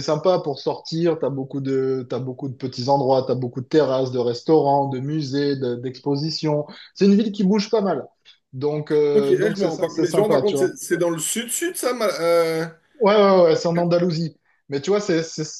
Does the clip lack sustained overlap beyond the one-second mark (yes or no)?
no